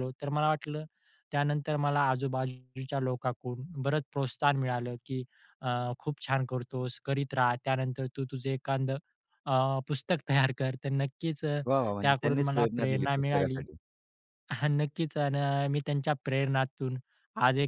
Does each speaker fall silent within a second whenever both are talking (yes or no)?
no